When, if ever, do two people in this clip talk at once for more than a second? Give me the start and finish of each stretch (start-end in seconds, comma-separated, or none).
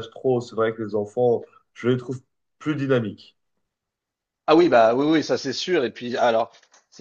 none